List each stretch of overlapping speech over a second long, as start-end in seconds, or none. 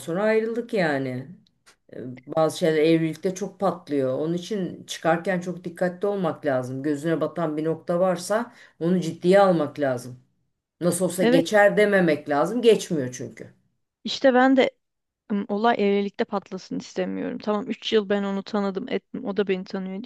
none